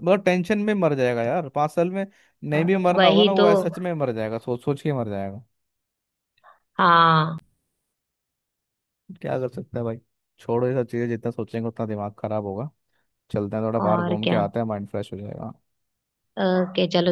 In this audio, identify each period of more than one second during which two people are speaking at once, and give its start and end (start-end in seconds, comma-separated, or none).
none